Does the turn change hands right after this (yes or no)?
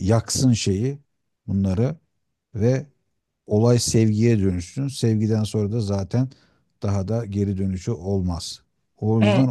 no